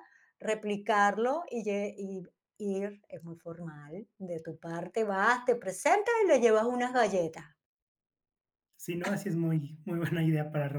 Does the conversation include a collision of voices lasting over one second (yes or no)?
no